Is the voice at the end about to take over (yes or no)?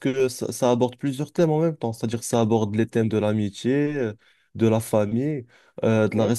no